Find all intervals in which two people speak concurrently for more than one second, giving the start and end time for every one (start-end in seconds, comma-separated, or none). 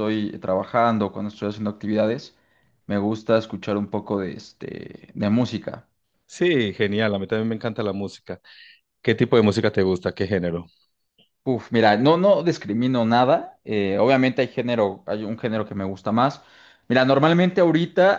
none